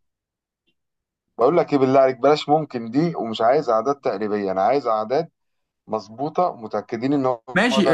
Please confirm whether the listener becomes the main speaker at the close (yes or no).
yes